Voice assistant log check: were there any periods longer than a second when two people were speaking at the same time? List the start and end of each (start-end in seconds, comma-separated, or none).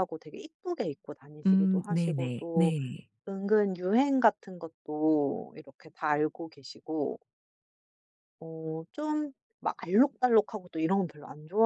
1.5-2.7